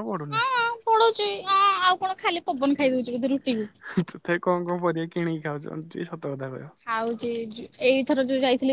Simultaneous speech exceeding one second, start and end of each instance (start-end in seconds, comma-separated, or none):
none